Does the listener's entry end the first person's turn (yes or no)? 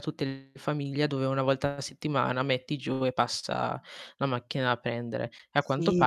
yes